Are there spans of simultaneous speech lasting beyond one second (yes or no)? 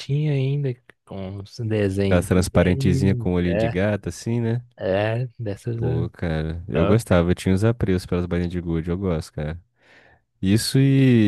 yes